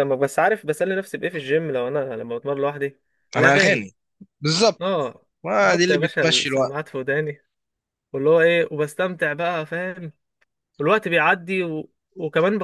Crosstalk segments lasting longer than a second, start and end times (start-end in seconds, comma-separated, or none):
5.4-6.8